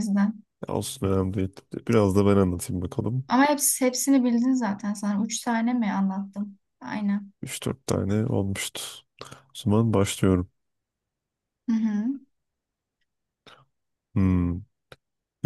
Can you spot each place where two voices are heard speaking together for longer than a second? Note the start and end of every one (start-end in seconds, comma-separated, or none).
none